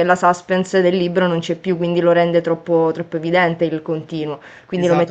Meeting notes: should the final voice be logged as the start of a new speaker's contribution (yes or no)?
yes